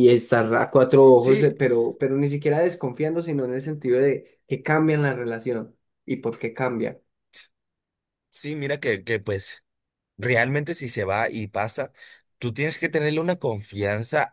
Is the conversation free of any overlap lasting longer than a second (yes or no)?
yes